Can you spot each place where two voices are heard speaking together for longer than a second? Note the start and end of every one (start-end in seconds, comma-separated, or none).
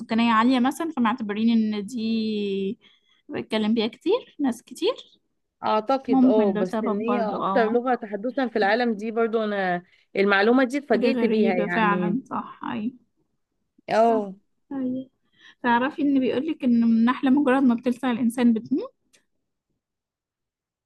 6.1-7.8, 10.9-12.2